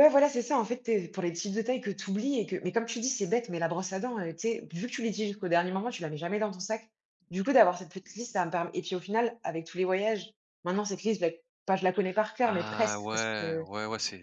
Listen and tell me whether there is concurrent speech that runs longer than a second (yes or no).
yes